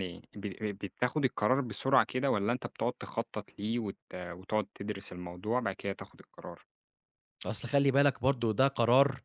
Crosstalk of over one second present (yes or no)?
no